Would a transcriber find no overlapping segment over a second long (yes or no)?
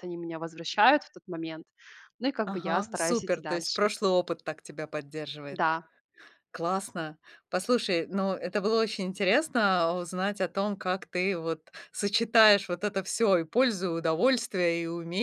no